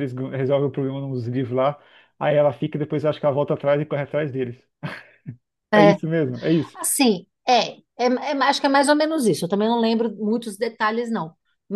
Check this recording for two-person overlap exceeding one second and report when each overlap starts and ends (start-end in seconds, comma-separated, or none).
none